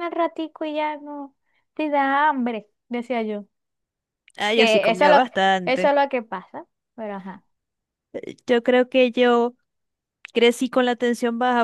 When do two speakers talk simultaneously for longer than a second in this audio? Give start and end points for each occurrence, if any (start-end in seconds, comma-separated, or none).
4.5-6.0